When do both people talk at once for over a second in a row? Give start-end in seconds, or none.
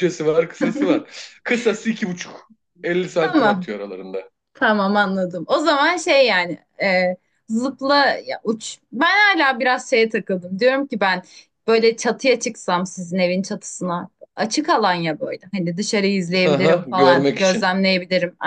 16.4-17.7